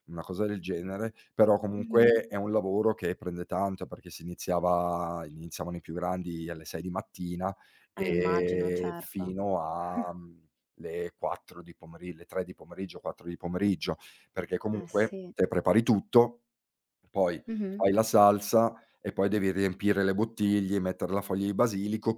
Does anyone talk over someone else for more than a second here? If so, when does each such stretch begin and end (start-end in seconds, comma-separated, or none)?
8.0-9.4